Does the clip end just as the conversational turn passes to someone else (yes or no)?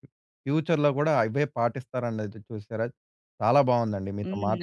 no